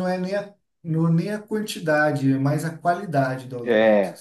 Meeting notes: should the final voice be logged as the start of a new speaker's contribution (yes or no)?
yes